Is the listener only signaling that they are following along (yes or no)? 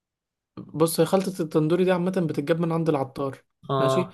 yes